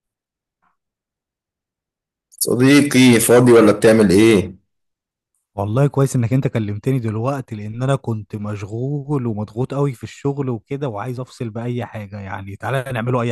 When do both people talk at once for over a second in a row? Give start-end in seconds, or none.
none